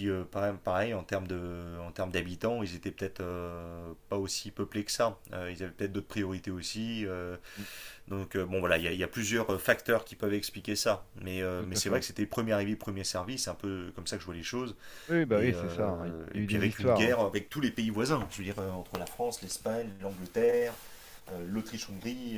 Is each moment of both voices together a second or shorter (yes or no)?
no